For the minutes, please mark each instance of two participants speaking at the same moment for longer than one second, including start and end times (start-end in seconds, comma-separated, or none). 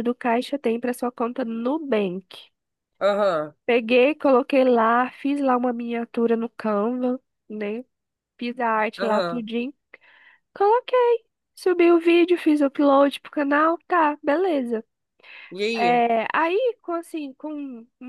none